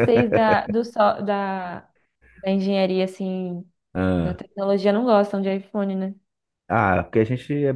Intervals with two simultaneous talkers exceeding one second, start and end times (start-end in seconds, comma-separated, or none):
none